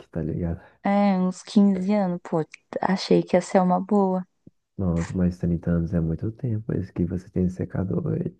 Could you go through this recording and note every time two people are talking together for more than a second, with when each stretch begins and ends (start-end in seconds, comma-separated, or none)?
none